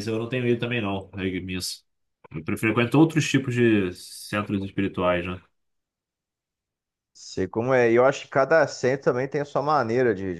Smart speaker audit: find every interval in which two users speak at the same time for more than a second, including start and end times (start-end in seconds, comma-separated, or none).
none